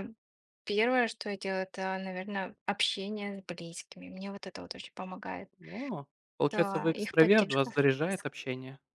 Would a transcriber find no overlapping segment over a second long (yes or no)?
no